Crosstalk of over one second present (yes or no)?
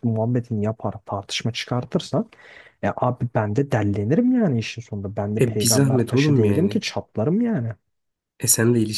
yes